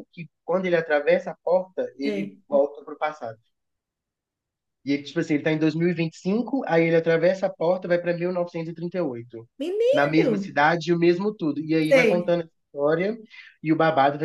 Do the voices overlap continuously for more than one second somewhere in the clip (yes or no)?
no